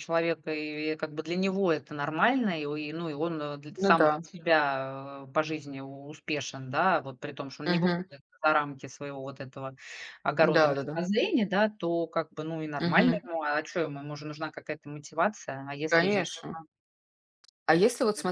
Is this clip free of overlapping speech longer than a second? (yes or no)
yes